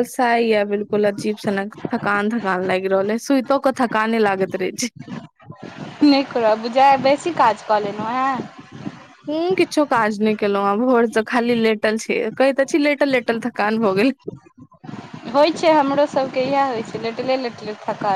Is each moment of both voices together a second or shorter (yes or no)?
yes